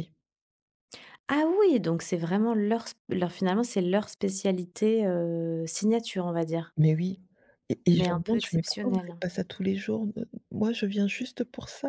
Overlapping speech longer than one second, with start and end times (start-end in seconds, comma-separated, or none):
7.9-9.2